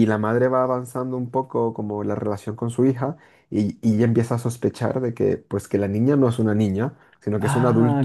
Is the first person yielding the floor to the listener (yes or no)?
yes